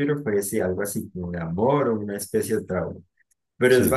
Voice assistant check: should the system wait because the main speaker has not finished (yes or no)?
yes